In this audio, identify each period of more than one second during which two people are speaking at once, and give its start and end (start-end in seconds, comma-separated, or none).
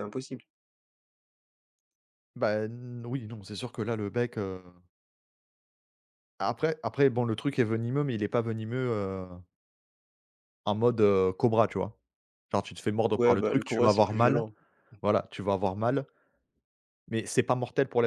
13.1-14.4